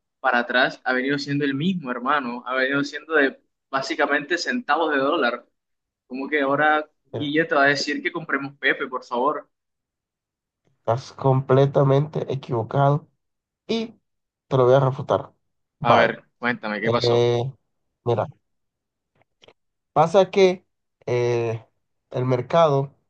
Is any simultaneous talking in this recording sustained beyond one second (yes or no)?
no